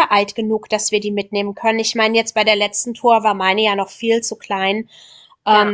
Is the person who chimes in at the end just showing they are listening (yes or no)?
yes